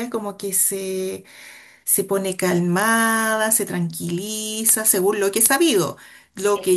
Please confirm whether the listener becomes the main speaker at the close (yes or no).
yes